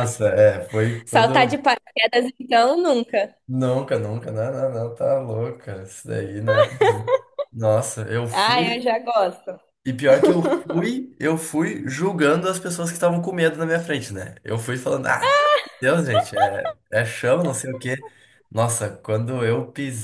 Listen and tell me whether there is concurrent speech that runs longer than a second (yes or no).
no